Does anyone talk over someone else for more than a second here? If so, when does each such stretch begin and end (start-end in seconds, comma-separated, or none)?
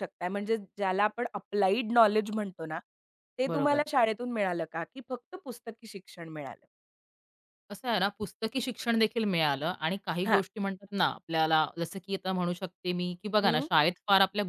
none